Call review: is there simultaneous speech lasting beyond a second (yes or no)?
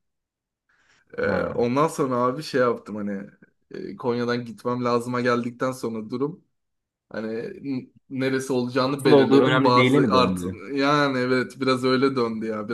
yes